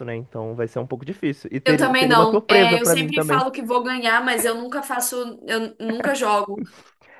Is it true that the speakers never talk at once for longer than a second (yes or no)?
no